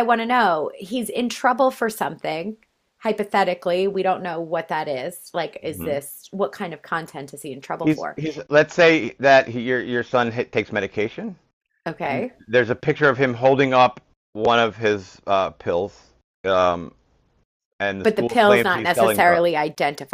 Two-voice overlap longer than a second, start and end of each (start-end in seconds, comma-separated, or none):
18.0-19.5